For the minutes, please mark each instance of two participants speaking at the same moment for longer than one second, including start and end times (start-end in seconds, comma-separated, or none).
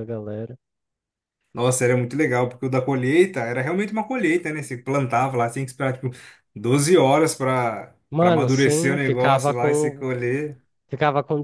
8.1-10.1